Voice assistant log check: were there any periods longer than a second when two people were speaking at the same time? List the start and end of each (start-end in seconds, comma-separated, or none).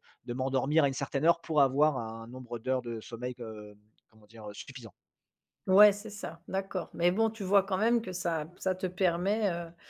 none